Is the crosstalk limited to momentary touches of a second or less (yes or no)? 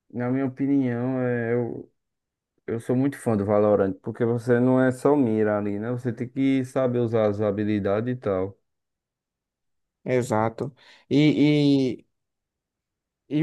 yes